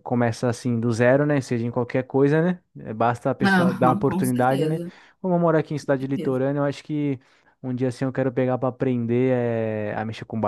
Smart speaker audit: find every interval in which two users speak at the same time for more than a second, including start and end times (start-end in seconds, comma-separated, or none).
3.4-4.8